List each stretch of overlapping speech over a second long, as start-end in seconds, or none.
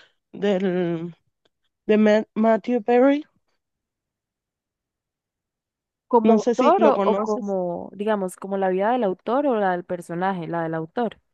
6.2-7.5